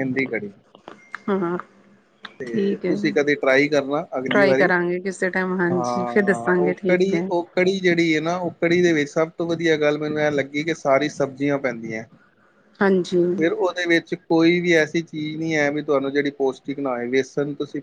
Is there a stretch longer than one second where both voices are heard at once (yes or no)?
yes